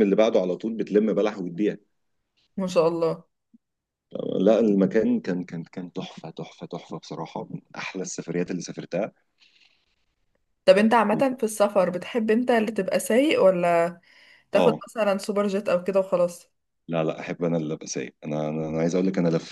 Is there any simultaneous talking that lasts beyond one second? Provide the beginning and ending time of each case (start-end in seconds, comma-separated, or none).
none